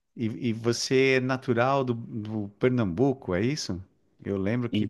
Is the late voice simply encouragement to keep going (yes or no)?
yes